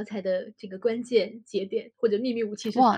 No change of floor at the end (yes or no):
no